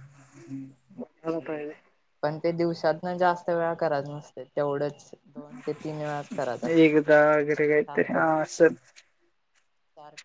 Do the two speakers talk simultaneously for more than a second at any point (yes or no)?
yes